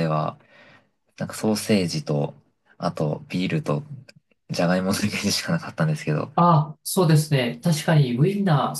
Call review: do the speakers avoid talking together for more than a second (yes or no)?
yes